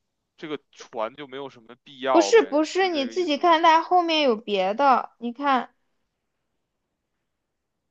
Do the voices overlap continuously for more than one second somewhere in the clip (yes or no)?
yes